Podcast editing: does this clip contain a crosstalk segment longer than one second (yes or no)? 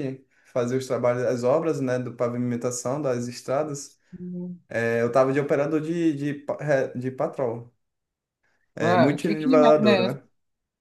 yes